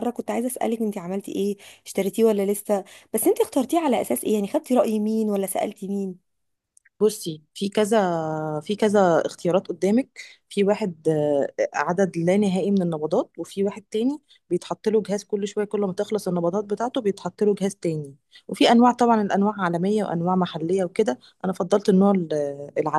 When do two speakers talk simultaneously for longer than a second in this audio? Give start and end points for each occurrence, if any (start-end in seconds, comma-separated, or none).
none